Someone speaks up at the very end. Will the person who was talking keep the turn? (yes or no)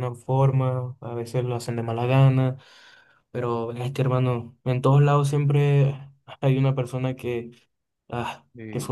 yes